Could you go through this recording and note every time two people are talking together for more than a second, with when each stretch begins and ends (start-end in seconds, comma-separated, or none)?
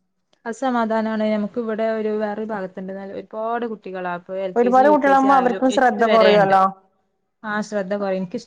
4.6-6.5